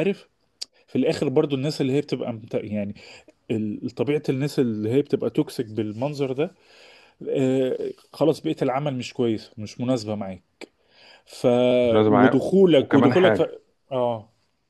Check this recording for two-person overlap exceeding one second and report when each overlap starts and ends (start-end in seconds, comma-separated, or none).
12.1-13.4